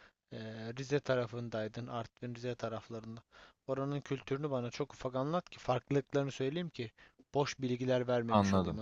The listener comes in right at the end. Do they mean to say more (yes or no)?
yes